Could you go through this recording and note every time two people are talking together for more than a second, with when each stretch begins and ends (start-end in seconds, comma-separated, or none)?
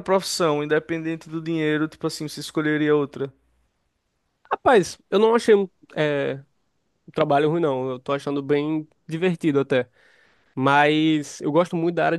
none